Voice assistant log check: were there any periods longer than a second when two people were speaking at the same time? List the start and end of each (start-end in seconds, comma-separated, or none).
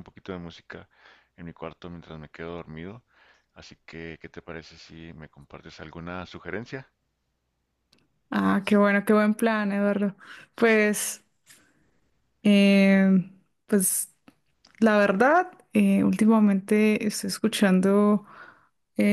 none